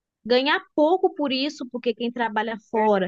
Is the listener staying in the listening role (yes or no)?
yes